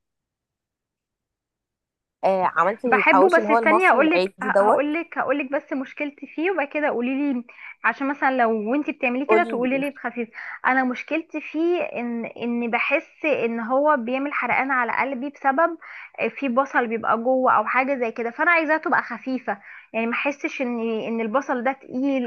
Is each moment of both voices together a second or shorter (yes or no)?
no